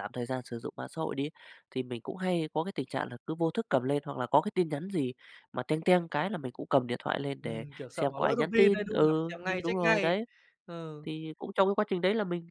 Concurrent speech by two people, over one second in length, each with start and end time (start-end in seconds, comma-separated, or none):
7.4-10.1